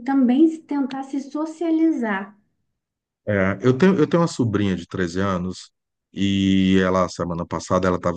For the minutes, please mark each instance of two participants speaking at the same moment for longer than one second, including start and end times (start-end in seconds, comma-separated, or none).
none